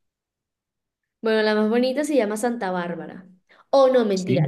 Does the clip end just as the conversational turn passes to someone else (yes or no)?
no